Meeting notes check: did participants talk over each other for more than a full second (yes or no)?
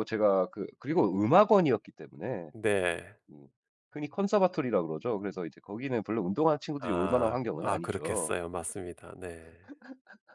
yes